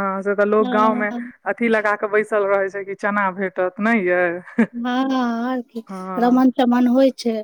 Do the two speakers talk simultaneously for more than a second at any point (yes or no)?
no